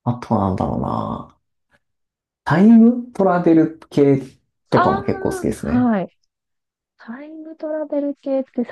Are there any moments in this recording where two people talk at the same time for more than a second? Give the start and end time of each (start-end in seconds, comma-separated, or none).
none